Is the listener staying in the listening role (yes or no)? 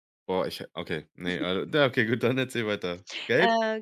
no